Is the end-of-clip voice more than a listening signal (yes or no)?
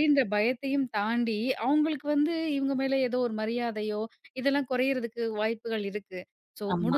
no